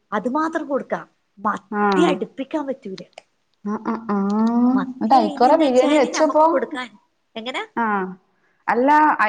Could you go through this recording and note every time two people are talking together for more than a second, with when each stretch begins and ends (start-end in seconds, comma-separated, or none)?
4.9-6.4